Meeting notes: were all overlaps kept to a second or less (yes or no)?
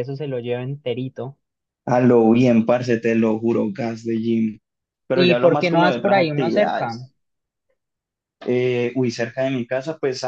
no